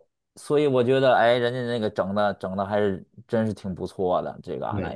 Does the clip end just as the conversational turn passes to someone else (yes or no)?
yes